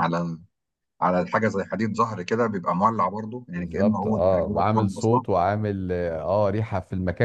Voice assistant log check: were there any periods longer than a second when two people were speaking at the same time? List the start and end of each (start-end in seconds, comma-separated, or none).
3.5-5.2